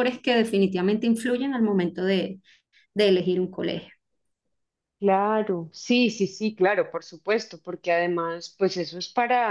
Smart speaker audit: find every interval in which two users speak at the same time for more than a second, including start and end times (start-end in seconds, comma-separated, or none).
none